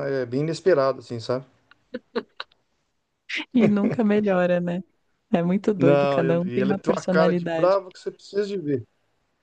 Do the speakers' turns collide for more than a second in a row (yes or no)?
yes